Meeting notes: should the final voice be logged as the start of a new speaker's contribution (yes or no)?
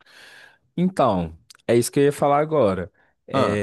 no